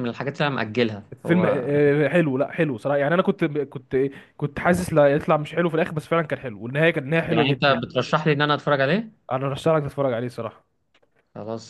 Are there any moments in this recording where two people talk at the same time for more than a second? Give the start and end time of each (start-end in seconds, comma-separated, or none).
none